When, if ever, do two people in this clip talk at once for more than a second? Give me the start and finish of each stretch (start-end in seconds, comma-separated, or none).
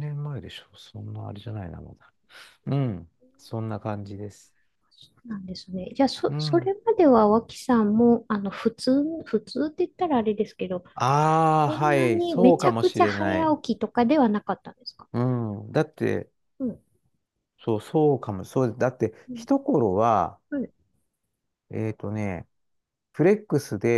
11.6-13.6